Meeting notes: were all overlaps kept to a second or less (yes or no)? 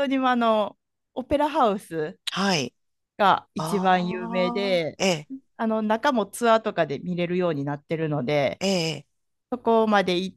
no